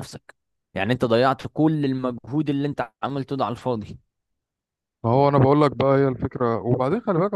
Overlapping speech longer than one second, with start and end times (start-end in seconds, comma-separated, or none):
none